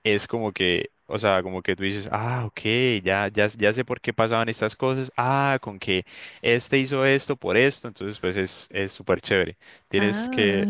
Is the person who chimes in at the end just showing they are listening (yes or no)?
no